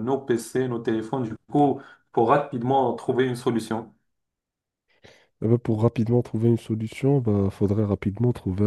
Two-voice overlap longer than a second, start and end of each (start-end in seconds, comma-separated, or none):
none